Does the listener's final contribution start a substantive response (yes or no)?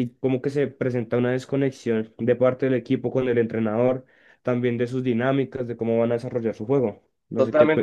yes